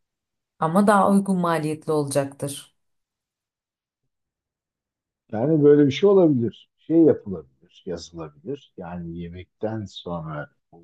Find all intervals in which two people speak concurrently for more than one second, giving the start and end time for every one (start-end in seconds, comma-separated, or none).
none